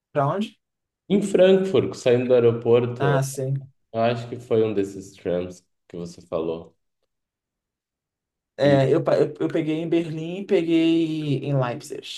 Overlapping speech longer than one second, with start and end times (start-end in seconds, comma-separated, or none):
none